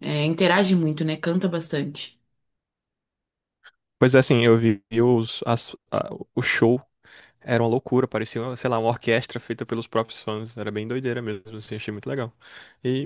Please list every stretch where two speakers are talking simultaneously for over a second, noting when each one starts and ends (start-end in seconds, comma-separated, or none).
none